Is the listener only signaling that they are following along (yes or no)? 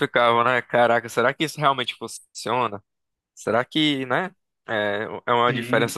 yes